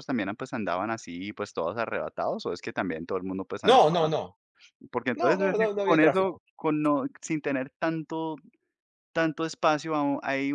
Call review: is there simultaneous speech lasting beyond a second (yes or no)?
yes